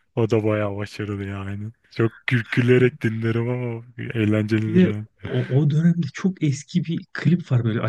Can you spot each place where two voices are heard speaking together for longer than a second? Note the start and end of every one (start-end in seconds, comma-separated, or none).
none